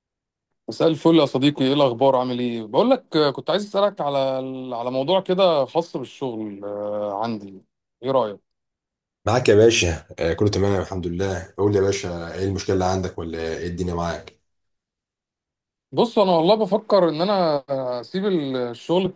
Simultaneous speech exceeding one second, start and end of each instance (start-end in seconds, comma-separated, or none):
none